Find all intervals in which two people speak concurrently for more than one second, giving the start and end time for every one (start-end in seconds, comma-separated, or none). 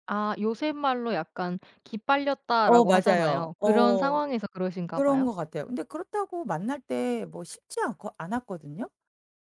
2.6-4.2